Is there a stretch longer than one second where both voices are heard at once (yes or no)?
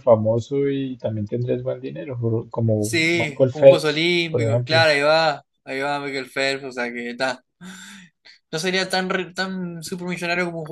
yes